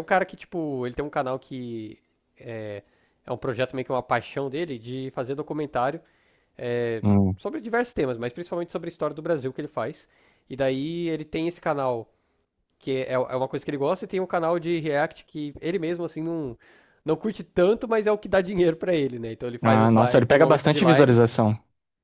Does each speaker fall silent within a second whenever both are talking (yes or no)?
no